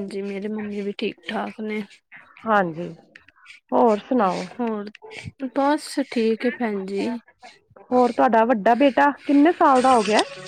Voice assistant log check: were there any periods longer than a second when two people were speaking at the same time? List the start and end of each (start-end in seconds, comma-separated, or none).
none